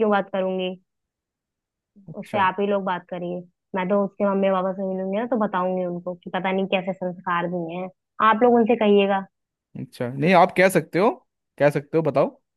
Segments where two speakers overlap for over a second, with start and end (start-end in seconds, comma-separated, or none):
none